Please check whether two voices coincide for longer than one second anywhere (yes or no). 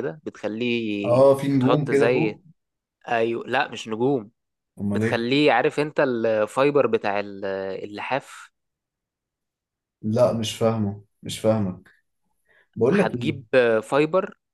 yes